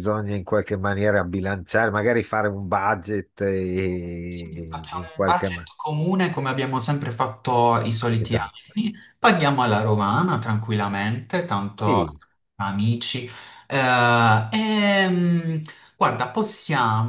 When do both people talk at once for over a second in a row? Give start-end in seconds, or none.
4.3-5.7